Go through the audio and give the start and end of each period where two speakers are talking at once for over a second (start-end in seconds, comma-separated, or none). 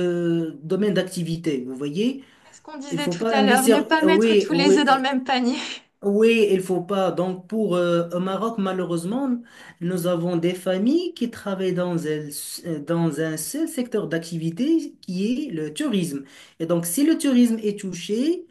2.9-4.8